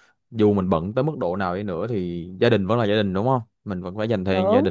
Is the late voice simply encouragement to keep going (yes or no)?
yes